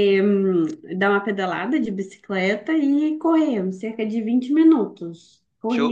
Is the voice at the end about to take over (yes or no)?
yes